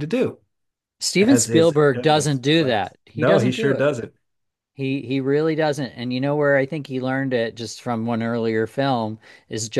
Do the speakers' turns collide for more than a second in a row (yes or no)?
yes